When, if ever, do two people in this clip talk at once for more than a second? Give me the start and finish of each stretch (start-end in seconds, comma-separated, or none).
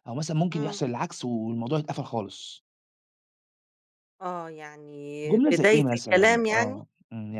5.3-6.8